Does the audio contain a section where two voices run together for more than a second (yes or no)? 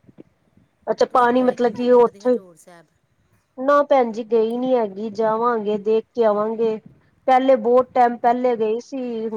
yes